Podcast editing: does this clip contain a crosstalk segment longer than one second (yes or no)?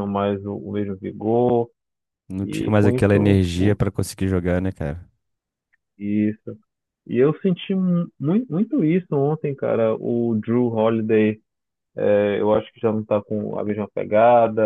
yes